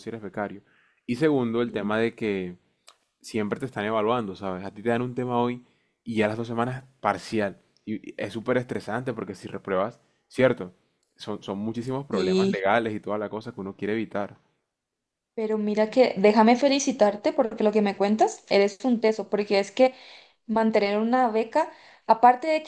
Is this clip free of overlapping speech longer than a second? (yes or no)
yes